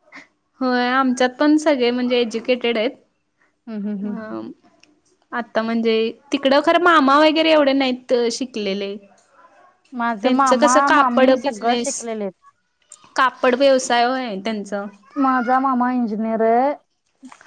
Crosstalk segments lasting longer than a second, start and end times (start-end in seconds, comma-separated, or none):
10.2-11.9